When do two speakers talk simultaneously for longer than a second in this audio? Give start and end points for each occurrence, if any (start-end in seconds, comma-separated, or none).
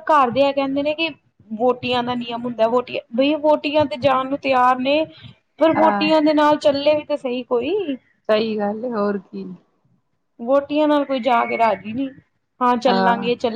none